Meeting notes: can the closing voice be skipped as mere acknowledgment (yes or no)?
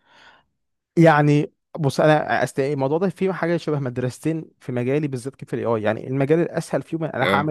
yes